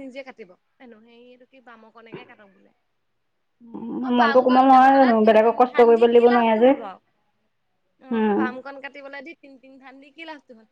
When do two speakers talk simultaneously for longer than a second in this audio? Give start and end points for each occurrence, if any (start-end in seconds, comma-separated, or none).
4.1-6.7